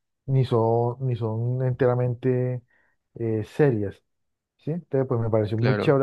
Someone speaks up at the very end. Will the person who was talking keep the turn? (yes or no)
yes